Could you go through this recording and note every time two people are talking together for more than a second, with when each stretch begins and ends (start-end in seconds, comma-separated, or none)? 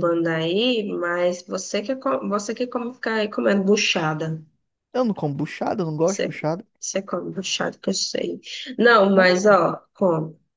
none